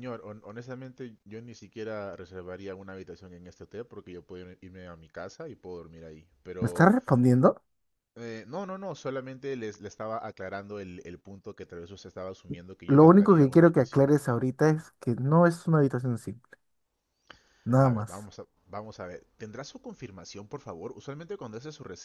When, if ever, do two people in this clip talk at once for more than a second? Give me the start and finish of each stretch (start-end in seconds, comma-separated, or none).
12.9-14.1